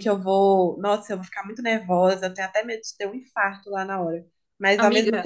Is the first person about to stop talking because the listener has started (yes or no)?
no